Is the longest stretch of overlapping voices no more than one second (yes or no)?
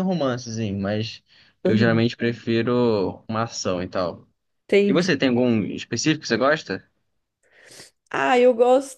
yes